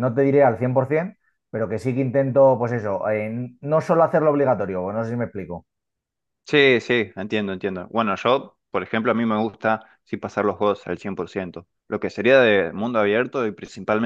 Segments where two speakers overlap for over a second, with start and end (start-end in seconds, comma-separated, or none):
none